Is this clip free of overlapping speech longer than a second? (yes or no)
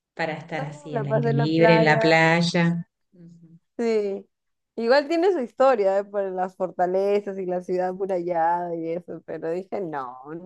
no